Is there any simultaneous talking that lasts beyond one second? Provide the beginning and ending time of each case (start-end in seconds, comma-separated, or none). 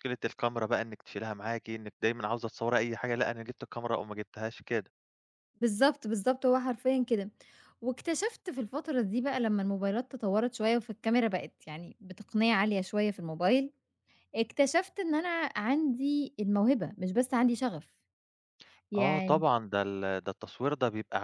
none